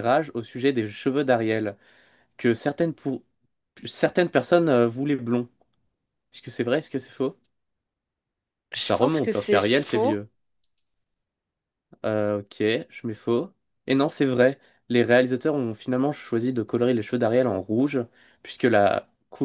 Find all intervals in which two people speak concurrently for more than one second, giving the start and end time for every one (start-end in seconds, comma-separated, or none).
8.8-10.2